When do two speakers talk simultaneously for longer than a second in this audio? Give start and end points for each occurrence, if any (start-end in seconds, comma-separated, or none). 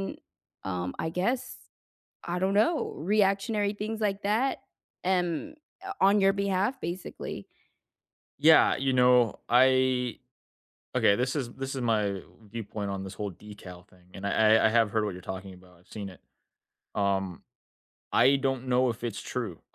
none